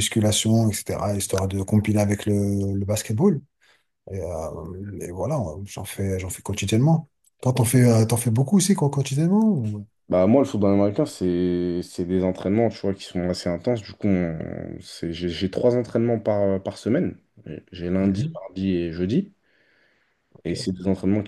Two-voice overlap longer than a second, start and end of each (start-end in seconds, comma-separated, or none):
none